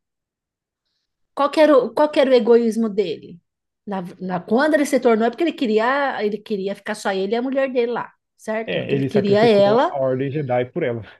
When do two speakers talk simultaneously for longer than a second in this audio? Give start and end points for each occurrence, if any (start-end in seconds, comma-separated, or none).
8.7-9.9